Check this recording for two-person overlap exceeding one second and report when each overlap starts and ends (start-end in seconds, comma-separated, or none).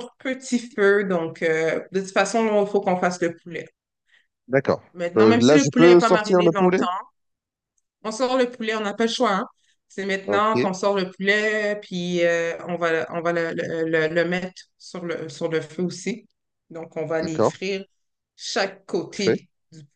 4.9-6.8